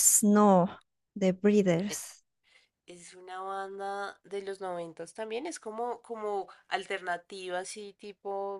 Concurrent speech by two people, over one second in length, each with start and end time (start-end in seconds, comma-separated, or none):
none